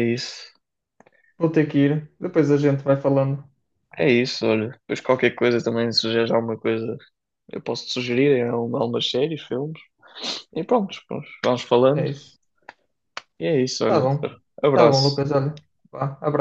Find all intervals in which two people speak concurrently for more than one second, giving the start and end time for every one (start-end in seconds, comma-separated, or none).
none